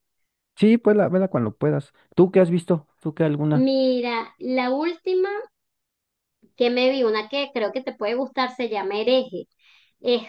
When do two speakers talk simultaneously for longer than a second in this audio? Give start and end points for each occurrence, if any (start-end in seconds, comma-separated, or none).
none